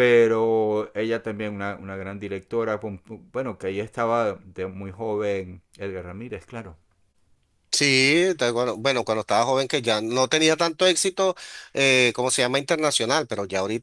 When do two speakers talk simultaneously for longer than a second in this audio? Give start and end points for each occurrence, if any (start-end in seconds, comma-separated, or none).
none